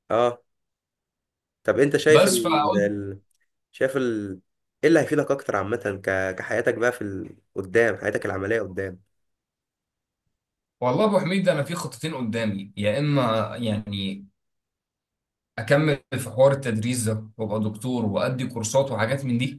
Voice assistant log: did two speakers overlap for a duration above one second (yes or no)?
no